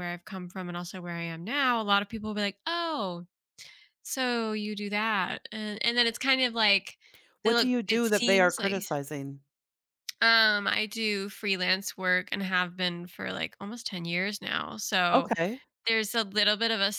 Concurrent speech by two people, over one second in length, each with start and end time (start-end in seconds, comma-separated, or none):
7.4-8.8